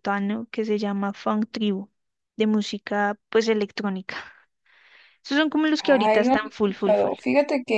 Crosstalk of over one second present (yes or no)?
yes